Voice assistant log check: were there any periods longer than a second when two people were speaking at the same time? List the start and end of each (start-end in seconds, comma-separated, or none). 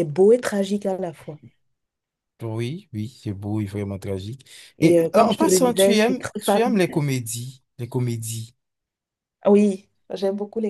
4.8-6.6